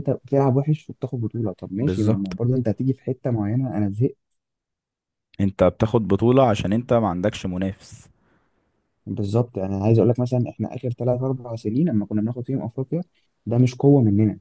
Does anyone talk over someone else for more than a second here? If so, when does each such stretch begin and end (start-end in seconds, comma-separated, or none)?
none